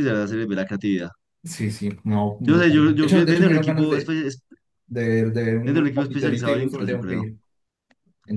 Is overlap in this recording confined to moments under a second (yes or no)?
no